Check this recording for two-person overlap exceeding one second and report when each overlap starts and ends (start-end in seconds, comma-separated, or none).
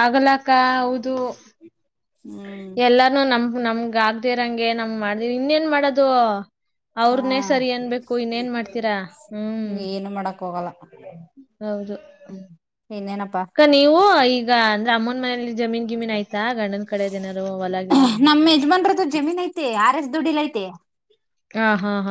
none